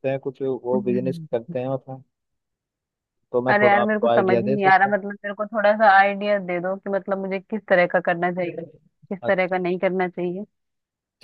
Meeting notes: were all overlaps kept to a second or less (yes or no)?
no